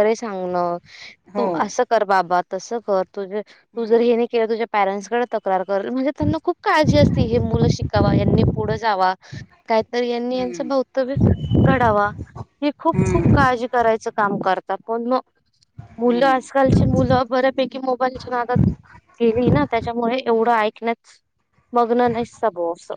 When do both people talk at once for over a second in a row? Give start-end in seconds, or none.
none